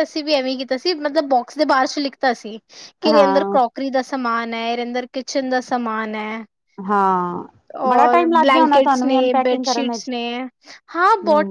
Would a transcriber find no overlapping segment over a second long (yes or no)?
no